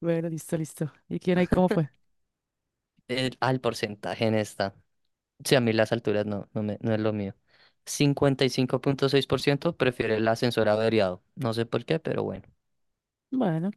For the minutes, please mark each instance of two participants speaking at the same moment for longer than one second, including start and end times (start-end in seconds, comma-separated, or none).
none